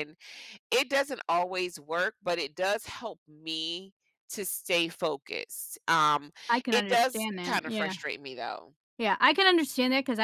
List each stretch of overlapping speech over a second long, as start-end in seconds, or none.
6.7-7.9